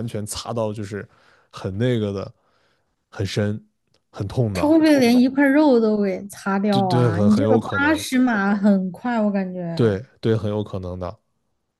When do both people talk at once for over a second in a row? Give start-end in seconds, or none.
6.7-8.0